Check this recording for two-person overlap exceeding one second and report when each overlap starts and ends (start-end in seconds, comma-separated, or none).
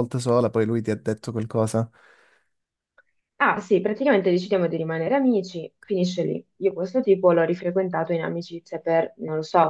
none